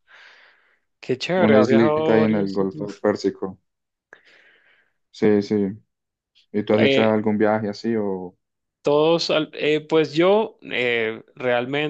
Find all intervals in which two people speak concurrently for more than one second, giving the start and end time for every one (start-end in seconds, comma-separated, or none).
1.4-3.0